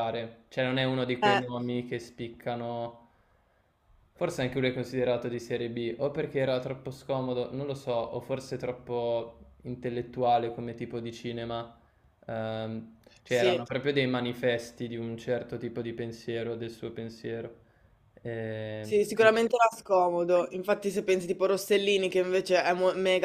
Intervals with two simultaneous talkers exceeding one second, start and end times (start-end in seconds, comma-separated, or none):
none